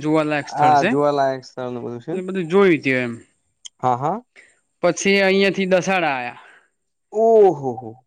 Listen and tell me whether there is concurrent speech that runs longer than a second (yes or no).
yes